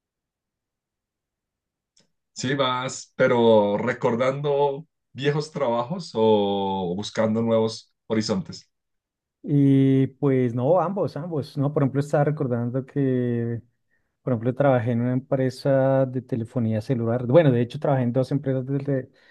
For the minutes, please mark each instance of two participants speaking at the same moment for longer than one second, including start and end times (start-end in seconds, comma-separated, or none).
none